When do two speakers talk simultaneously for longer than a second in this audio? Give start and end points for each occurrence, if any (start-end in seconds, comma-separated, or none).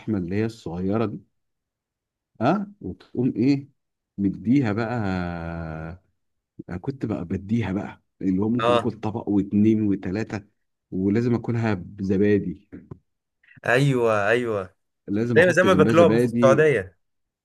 15.4-16.6